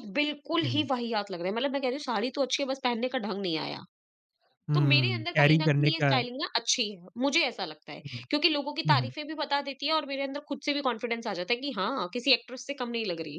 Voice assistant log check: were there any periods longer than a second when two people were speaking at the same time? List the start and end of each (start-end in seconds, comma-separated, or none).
4.7-6.2